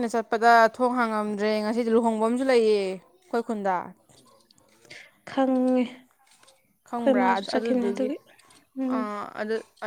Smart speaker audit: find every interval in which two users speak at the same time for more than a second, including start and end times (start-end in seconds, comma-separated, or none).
6.8-8.1